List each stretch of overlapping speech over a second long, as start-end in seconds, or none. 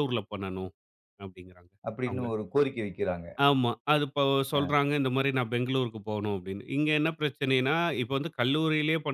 none